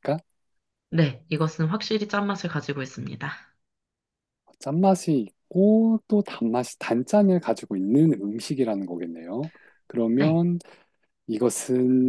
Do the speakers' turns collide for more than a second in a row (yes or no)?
no